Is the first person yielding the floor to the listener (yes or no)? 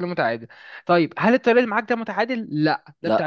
no